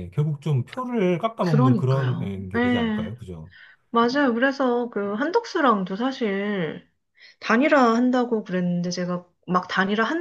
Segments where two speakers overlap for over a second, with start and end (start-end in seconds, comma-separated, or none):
1.4-3.1